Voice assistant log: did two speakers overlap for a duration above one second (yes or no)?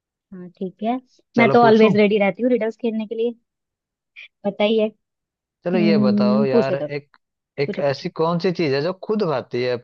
yes